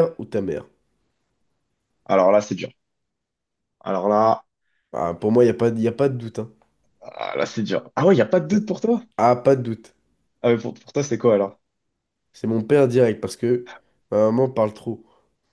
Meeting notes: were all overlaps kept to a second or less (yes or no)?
yes